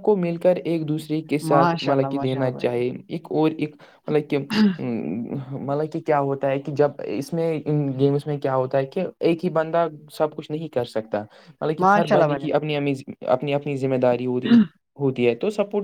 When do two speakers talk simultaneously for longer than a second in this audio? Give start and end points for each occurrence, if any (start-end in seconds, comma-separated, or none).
1.4-2.7